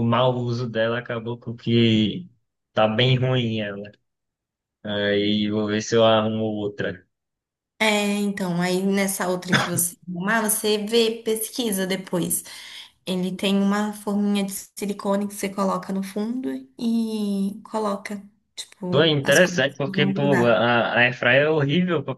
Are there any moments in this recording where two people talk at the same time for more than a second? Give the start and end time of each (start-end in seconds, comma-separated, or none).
18.9-20.6